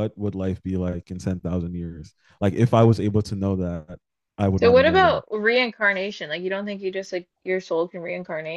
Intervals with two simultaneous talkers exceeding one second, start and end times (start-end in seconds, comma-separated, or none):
none